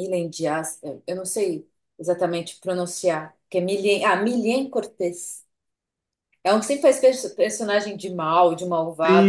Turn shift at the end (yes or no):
yes